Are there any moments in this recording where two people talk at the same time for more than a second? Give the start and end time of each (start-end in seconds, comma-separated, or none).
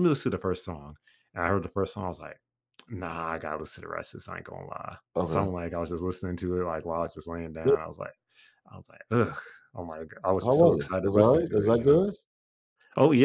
10.4-12.0